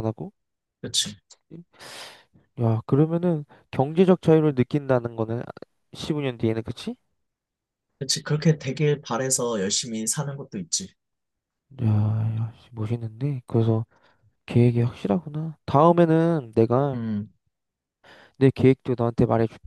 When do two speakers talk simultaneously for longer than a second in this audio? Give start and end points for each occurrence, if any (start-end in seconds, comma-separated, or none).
none